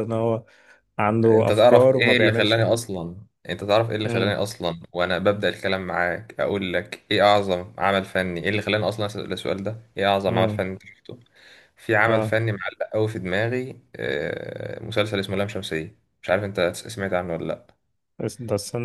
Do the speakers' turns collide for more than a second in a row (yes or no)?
yes